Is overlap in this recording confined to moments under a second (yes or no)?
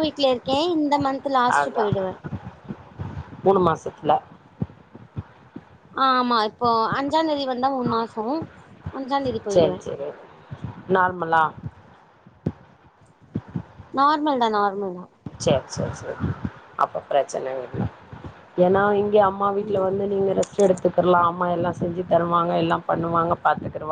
yes